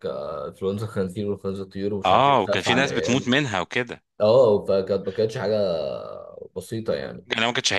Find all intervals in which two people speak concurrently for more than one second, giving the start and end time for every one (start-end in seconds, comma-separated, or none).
2.1-3.3